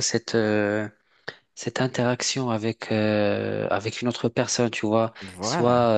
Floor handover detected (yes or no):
no